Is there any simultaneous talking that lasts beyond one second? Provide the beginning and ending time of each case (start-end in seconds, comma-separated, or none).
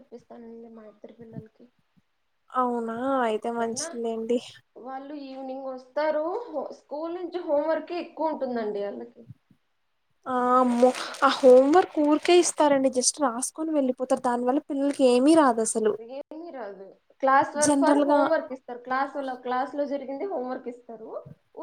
none